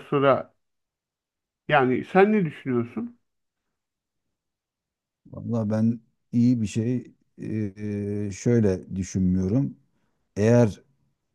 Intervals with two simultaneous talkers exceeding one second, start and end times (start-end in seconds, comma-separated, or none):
none